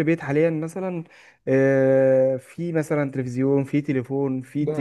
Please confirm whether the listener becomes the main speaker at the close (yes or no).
no